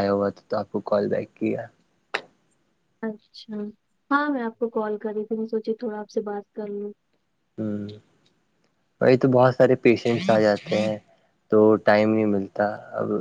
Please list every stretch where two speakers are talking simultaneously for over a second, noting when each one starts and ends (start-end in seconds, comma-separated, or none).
none